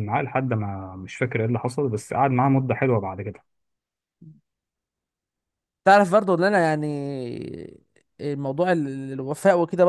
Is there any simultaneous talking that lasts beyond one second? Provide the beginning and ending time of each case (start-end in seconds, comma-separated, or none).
none